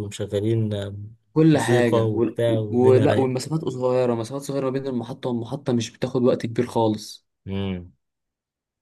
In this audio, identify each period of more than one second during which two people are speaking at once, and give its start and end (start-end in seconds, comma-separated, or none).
1.5-3.3